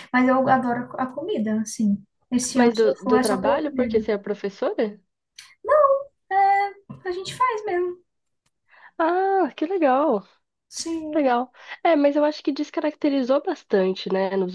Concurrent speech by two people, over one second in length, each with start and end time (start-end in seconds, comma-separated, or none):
2.5-4.0